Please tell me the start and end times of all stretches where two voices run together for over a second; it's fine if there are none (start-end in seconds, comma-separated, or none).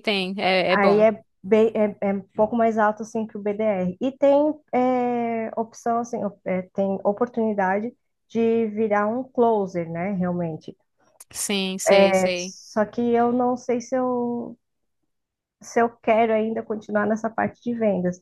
none